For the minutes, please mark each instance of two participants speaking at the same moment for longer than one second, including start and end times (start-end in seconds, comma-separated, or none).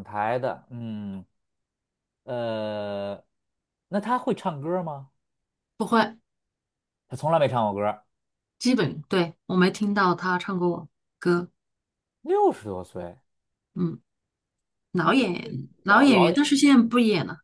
15.0-16.5